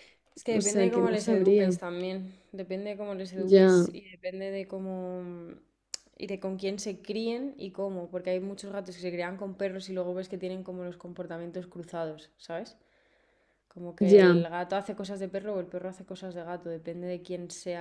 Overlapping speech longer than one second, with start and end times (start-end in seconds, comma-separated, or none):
0.5-1.8